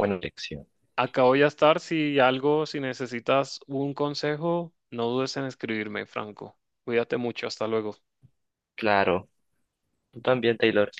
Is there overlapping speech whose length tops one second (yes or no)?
no